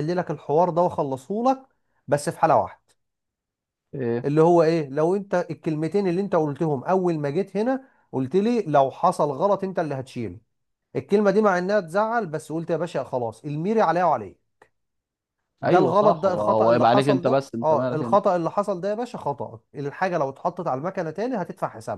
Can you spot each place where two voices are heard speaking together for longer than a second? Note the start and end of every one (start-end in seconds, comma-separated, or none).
15.6-18.2